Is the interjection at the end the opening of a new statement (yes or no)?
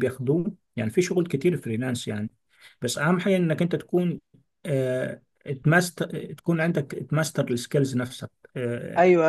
yes